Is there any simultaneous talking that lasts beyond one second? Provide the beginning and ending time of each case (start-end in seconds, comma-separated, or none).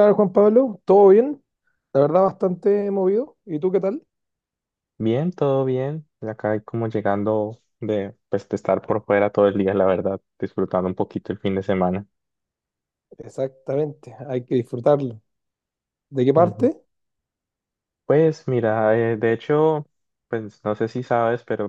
none